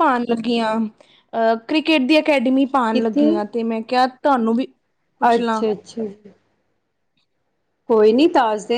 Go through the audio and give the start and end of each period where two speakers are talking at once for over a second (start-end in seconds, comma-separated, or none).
none